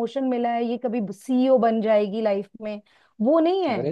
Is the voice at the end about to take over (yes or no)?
yes